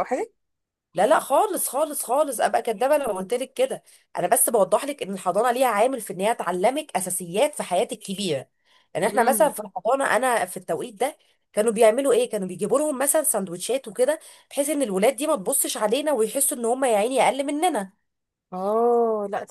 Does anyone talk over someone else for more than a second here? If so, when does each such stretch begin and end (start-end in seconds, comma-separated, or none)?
none